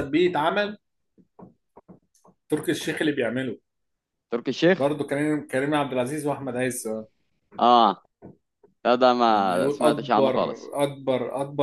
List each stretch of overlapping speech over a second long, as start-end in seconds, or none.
9.3-10.7